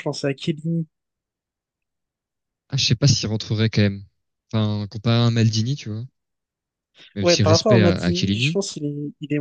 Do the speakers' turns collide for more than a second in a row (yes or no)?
yes